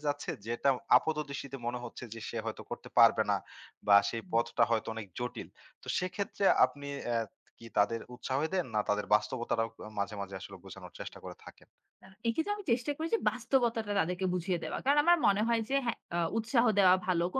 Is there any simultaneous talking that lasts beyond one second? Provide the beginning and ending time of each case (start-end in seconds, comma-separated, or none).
none